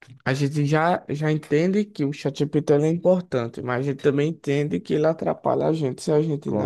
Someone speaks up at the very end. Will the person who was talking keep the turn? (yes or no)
no